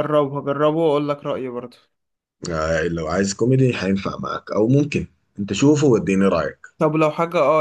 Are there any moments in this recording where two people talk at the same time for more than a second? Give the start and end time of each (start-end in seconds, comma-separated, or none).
none